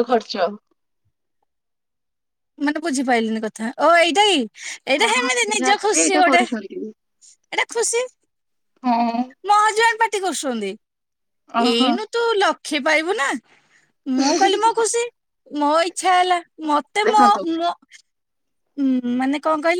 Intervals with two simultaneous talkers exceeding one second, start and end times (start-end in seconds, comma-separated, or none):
5.0-6.8